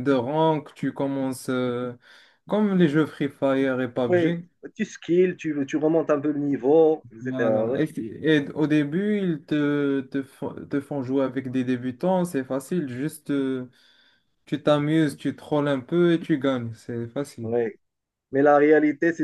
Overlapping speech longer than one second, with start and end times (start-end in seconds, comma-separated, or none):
none